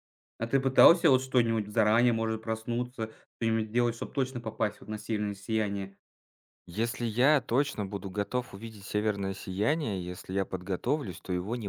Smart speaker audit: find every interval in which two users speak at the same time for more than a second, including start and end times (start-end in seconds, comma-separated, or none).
none